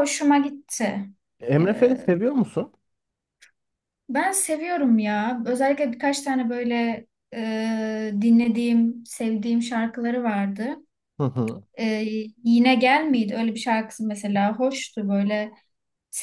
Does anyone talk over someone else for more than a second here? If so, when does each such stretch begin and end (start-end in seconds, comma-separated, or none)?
none